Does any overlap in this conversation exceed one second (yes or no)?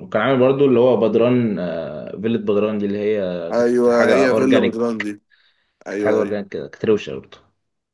yes